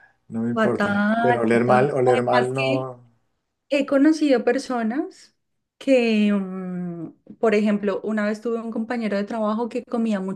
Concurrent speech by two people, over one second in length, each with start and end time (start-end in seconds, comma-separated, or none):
0.5-2.9